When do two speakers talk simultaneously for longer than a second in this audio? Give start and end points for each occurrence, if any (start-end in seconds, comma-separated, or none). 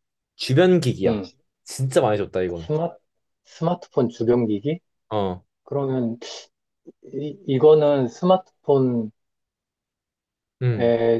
none